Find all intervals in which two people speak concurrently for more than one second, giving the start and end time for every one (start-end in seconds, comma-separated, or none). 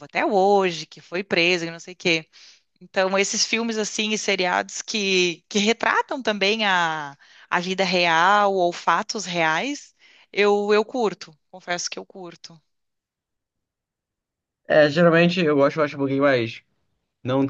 none